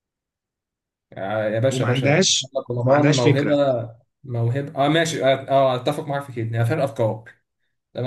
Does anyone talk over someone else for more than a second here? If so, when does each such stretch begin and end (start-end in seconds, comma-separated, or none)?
1.7-3.5